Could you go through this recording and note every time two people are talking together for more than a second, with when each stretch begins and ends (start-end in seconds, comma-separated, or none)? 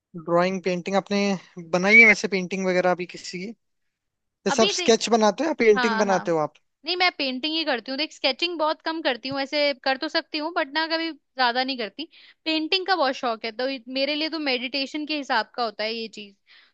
none